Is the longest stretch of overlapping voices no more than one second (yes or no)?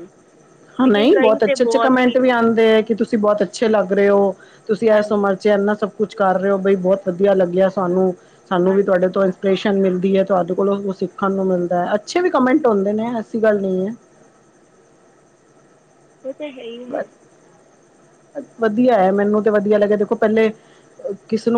no